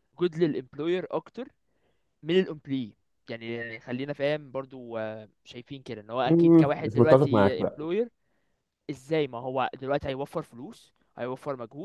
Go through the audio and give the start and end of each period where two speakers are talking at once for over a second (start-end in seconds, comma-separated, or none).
6.3-7.8